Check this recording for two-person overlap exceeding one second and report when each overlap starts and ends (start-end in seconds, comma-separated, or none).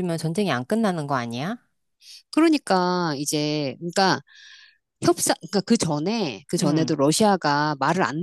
none